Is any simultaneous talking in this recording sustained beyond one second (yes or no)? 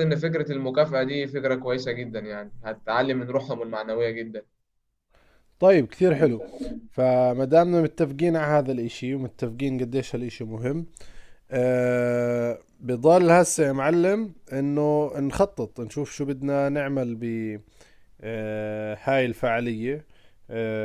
no